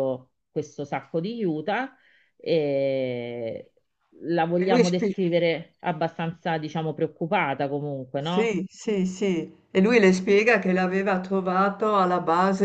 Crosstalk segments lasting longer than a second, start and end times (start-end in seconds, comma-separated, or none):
none